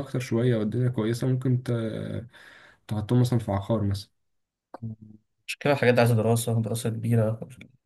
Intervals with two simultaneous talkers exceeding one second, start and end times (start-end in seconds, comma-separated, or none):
none